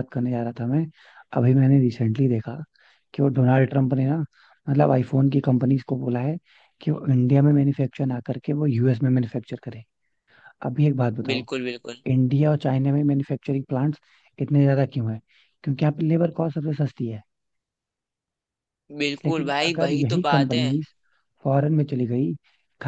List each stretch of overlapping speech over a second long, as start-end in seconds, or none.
19.2-20.6